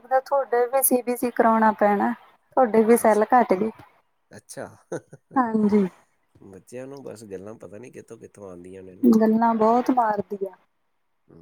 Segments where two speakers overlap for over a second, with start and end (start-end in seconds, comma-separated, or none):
none